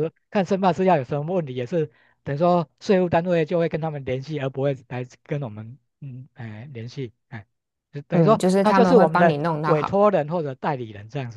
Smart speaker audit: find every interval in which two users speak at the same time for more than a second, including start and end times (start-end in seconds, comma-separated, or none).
8.1-10.1